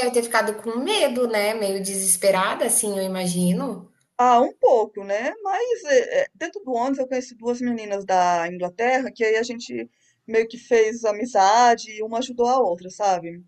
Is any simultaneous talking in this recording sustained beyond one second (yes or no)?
no